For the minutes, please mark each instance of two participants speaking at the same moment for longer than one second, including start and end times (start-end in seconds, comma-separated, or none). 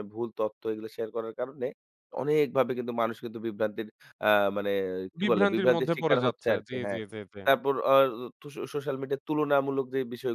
5.2-7.0